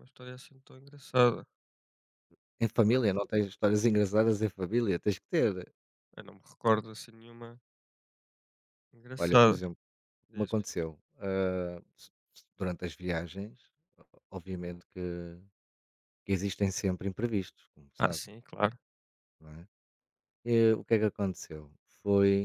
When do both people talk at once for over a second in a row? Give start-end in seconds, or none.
none